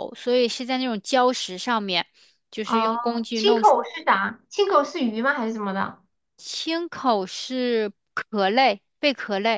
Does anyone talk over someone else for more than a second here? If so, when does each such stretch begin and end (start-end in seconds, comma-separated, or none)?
2.6-3.8